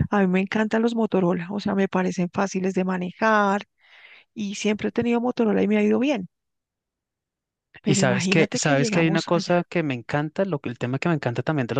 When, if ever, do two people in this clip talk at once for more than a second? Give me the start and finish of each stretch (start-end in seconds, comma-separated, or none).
7.8-9.6